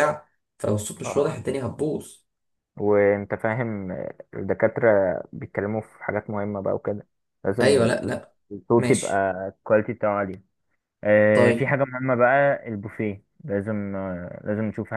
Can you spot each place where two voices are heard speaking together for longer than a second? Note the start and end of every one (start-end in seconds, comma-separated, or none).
none